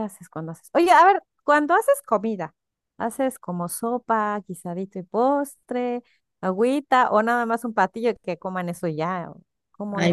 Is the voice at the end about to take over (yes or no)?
yes